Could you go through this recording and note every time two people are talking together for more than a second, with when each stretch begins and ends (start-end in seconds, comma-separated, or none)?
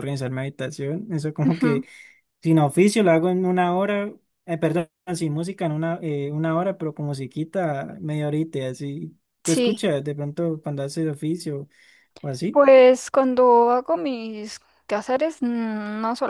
none